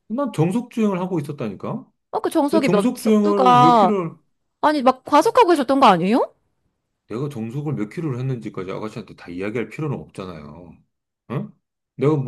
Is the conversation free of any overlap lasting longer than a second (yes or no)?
no